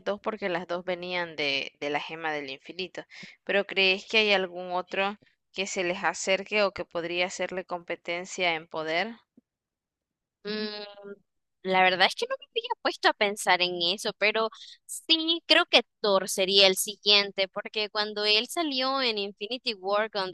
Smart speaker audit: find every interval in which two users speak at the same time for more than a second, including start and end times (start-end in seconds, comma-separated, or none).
none